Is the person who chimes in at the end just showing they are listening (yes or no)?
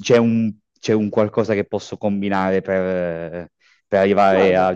yes